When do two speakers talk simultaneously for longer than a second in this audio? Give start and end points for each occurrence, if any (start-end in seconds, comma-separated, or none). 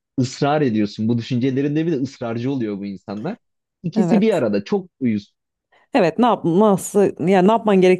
none